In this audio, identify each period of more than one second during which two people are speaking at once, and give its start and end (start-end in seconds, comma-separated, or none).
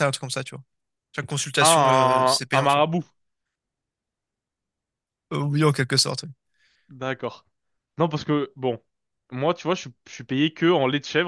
1.6-2.8